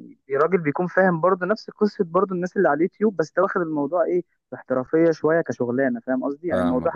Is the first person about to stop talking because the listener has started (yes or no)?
no